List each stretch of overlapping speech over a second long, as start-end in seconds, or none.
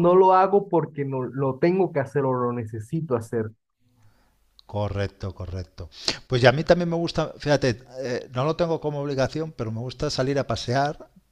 none